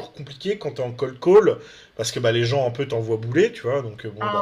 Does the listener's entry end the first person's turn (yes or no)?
no